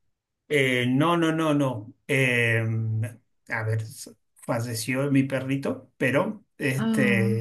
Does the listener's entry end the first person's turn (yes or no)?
no